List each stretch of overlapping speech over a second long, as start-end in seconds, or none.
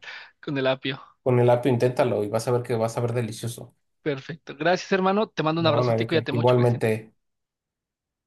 5.6-6.8